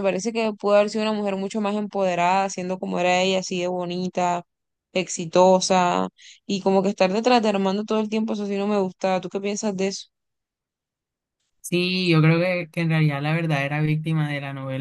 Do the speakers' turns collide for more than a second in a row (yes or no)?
no